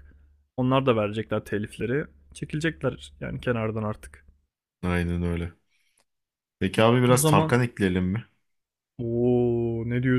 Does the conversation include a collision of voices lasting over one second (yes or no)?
no